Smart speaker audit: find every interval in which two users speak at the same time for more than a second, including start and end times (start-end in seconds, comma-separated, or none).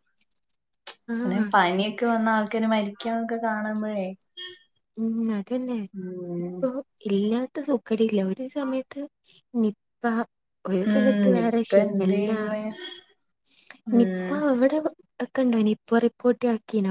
10.9-12.3